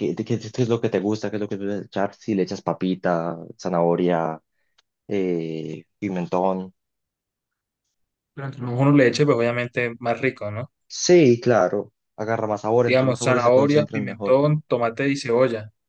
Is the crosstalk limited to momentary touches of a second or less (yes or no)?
no